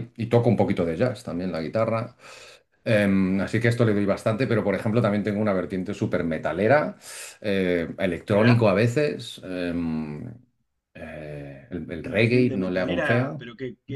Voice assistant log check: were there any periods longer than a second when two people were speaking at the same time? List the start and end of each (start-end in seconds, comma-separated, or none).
12.0-13.5